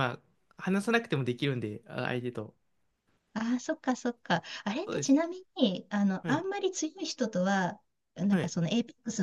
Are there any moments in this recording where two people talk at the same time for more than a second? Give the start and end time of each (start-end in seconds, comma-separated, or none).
none